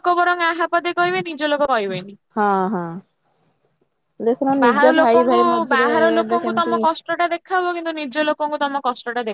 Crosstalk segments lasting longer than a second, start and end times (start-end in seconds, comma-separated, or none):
4.6-6.8